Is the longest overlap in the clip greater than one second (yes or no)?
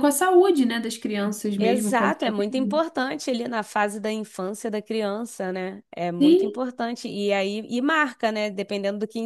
yes